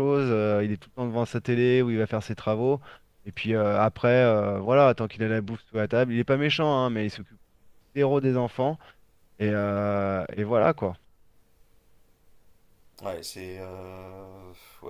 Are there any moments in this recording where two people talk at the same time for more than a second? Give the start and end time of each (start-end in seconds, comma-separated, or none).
none